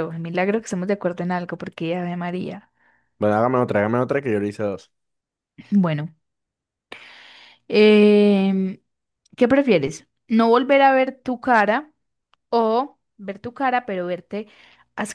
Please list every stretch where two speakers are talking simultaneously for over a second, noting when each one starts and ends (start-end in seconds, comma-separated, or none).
none